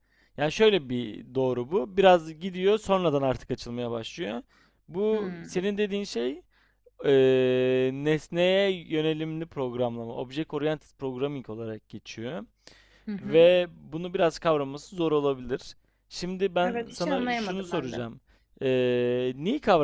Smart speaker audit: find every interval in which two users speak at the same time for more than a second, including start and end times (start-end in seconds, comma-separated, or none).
16.6-18.1